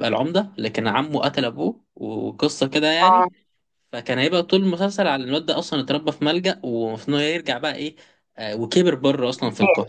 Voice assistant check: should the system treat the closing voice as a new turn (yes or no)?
no